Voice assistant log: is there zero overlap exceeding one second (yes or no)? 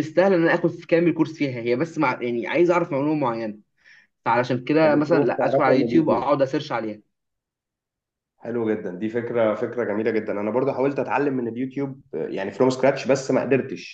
no